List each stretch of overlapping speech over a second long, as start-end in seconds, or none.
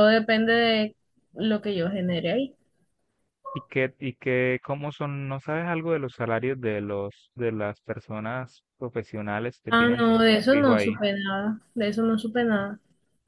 9.7-11.0